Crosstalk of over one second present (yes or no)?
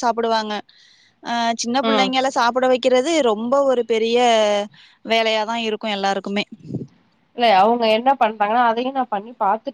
no